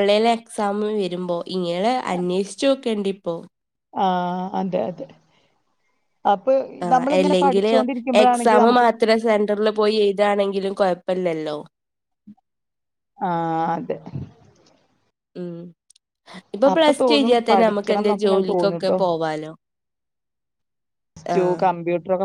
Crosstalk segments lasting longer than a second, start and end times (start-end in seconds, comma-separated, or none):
16.7-18.4